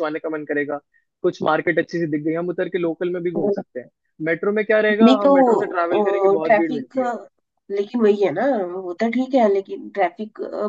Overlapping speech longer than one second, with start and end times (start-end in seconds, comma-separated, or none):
5.0-7.0